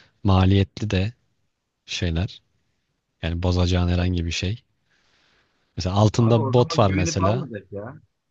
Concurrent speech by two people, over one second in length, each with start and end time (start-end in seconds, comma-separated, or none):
6.1-7.5